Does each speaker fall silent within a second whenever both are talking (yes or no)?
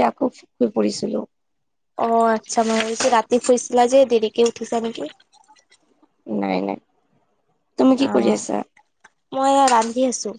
yes